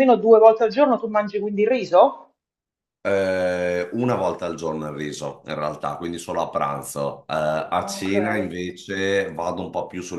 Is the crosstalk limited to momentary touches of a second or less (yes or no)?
yes